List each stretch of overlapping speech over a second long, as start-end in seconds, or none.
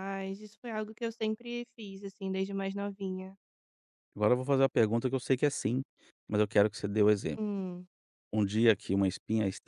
none